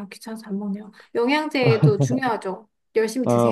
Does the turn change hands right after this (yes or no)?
yes